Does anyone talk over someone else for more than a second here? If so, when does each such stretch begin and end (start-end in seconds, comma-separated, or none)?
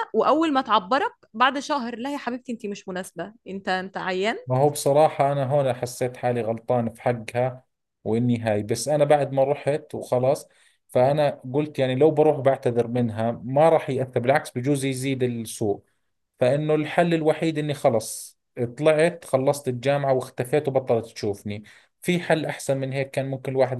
none